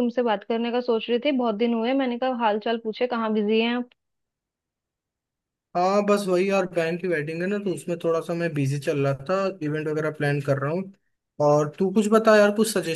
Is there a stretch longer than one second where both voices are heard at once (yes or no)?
no